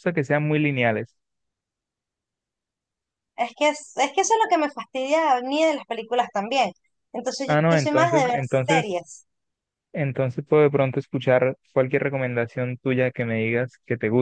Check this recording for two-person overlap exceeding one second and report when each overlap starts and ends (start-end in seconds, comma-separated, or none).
7.5-9.1